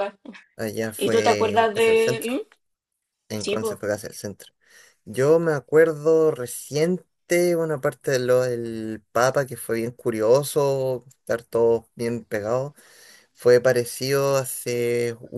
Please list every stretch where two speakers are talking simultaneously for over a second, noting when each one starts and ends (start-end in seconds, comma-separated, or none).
1.0-2.4